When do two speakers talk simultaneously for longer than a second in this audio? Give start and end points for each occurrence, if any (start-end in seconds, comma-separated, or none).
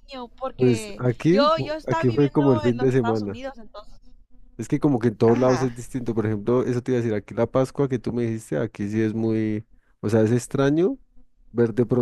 0.6-3.4